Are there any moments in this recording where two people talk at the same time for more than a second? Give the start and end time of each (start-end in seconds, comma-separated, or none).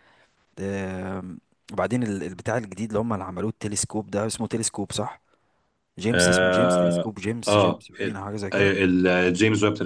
6.1-8.7